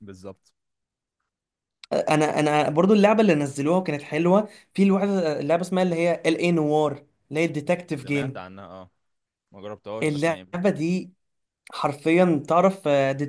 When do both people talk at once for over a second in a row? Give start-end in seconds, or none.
none